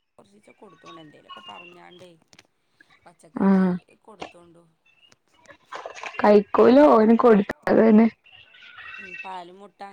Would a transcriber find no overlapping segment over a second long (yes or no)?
yes